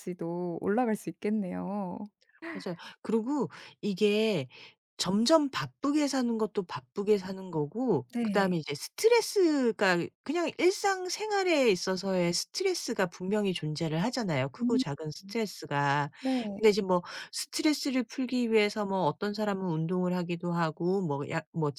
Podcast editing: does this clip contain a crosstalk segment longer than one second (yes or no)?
no